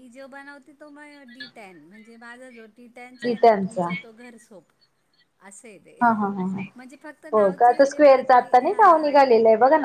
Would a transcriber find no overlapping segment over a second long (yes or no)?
no